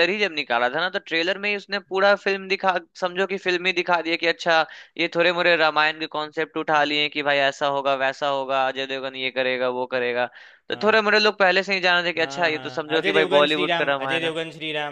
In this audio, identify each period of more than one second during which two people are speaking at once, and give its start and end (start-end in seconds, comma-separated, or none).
12.2-14.3